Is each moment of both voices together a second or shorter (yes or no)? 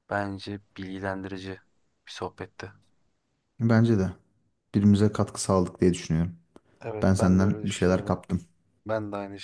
no